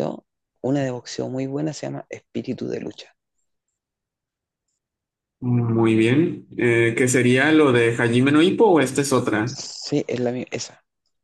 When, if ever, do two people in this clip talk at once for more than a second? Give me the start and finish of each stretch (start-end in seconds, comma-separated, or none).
none